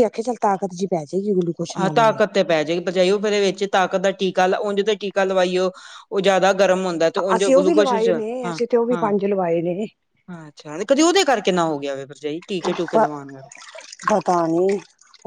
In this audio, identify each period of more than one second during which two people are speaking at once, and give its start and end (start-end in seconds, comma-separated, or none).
7.3-9.1